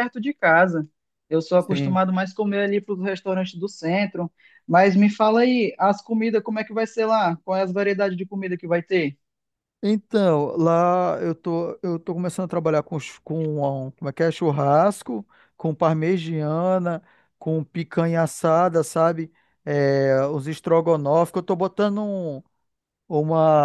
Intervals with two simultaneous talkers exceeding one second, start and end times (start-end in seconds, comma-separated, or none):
none